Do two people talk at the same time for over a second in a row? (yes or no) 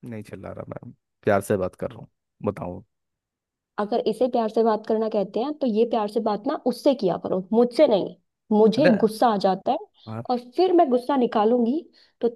no